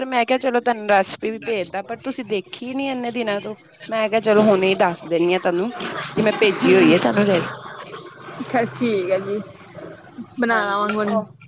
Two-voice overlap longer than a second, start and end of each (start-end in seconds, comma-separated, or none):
none